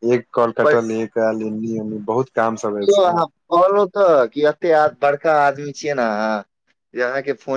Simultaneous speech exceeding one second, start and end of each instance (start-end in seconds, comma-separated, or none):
none